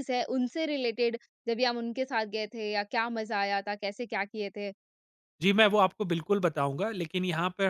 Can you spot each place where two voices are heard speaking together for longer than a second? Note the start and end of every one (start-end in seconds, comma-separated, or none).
none